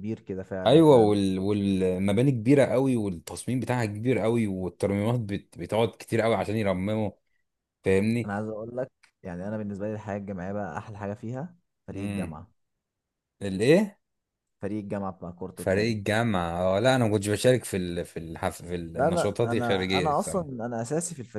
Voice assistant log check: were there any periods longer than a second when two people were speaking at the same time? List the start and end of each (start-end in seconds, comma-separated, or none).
18.9-20.5